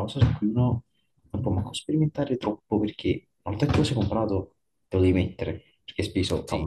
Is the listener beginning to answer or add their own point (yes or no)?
no